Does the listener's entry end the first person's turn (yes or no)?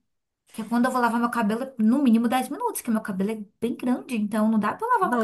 yes